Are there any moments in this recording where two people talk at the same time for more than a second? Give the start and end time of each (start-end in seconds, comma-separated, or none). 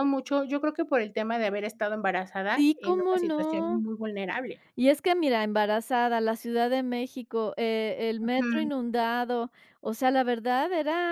2.5-3.8